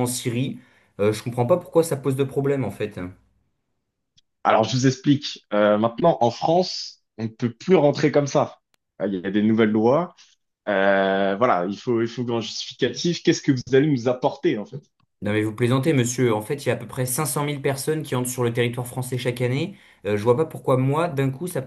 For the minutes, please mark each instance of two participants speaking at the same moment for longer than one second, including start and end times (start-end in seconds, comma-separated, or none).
none